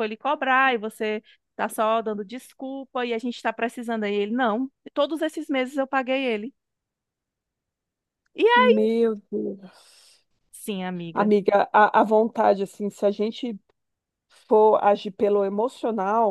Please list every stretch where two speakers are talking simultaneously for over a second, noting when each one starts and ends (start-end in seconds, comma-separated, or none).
none